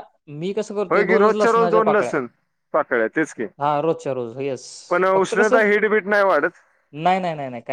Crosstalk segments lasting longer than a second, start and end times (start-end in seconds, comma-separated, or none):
0.9-2.1